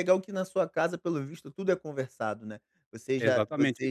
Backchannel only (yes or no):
no